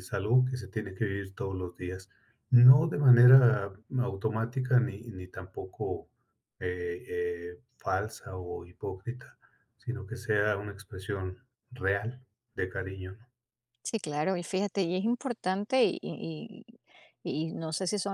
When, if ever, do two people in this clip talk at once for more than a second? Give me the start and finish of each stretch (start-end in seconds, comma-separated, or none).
none